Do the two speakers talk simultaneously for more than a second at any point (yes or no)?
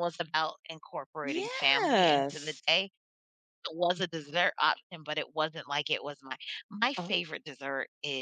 yes